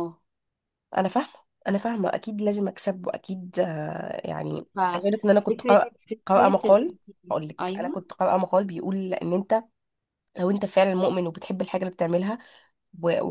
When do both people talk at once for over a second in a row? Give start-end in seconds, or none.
4.8-6.8